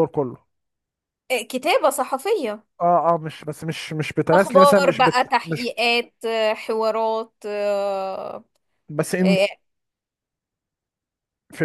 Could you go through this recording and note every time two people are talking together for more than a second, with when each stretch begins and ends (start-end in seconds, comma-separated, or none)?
4.3-5.7